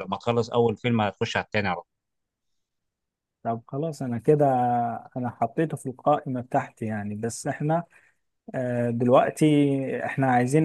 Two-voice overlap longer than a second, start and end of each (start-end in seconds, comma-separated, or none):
none